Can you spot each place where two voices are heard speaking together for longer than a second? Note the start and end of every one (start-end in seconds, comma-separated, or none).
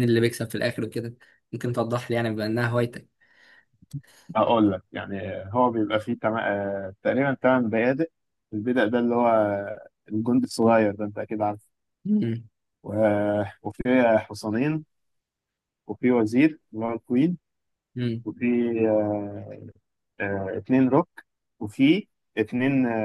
none